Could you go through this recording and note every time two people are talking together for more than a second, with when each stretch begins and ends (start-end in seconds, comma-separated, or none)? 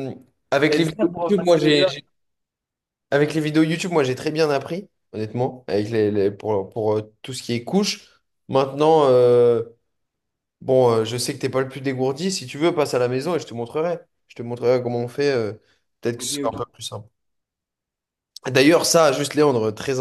0.7-1.9